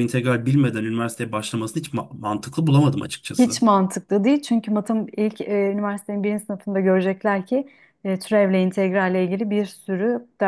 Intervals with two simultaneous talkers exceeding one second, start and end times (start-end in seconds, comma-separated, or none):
none